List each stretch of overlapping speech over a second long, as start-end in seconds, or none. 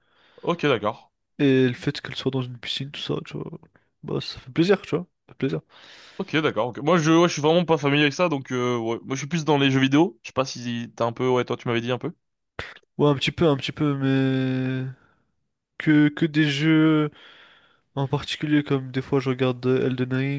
none